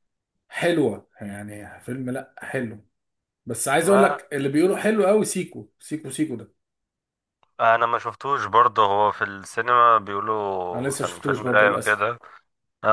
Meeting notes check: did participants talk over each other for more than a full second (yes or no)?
yes